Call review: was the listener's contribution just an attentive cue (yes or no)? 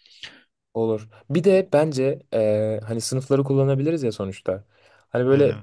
yes